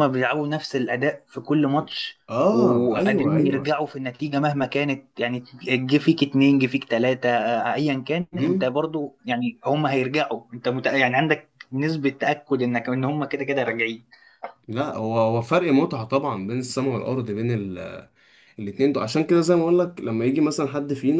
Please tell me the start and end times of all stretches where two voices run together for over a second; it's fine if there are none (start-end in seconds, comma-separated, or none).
2.3-3.8